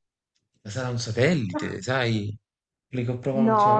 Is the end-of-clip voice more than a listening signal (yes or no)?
yes